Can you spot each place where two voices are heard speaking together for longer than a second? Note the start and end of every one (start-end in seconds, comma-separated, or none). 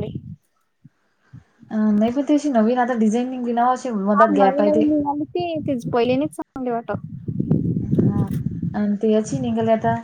none